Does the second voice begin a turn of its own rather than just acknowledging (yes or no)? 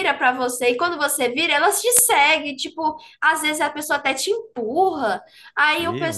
no